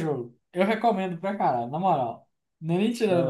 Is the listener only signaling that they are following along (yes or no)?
no